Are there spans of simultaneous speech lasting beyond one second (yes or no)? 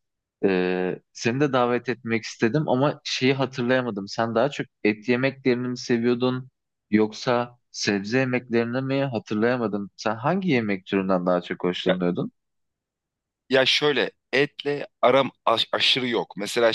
no